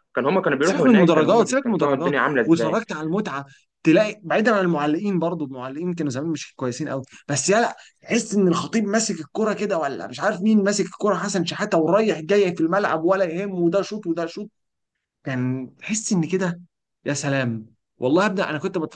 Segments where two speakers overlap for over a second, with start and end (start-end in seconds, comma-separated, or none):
0.6-2.8